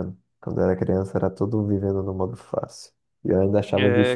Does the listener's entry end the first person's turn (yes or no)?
yes